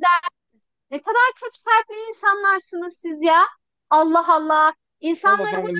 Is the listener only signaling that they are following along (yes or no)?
no